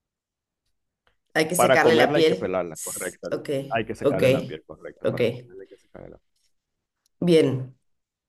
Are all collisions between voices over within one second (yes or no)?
no